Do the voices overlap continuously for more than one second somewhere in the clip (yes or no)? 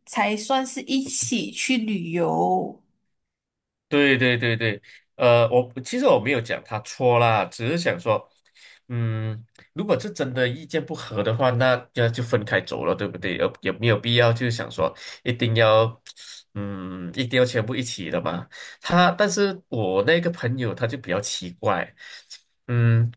no